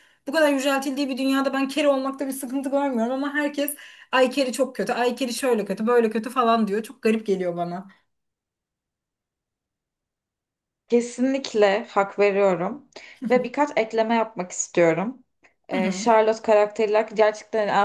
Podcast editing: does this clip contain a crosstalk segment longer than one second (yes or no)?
no